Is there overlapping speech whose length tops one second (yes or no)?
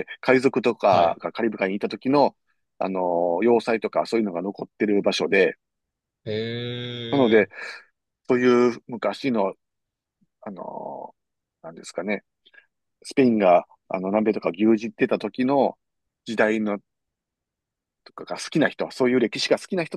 no